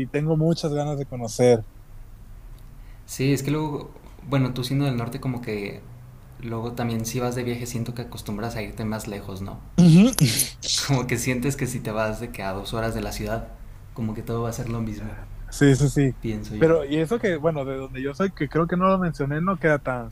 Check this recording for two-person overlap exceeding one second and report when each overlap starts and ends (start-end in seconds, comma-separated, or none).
none